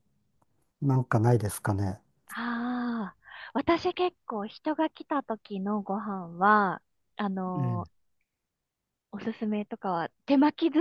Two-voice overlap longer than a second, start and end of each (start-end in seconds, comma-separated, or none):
none